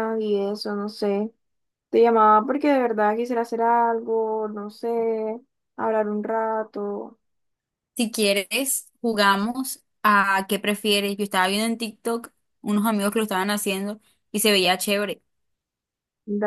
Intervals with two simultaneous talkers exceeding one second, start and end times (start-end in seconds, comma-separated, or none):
none